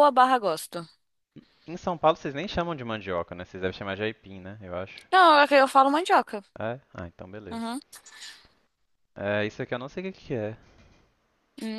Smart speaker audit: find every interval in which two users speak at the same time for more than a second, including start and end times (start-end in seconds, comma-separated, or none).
none